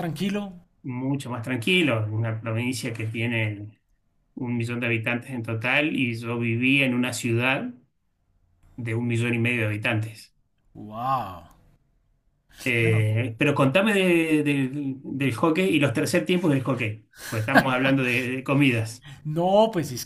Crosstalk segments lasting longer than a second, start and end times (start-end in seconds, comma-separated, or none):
none